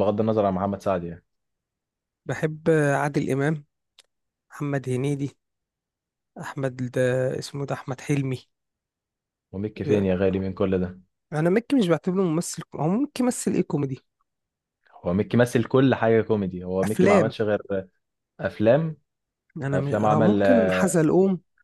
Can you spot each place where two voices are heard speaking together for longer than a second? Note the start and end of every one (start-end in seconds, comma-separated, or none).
19.6-20.9